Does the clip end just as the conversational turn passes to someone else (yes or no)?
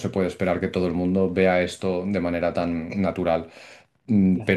no